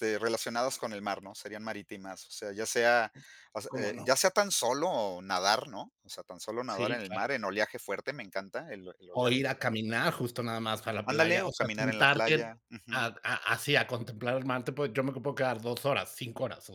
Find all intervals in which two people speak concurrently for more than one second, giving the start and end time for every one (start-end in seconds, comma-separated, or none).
11.0-13.1